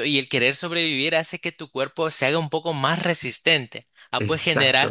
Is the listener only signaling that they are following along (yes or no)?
yes